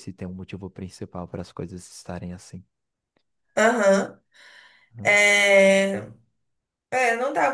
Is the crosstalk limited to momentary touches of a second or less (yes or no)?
yes